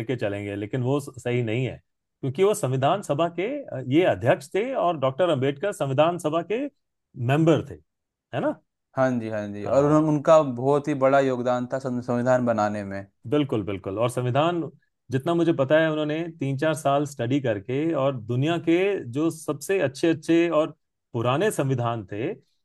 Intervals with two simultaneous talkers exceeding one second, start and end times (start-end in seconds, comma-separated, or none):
none